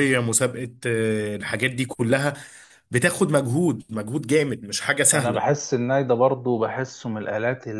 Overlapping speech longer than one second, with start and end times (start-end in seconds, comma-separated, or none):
none